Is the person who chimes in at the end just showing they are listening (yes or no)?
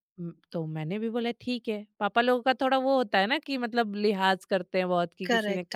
no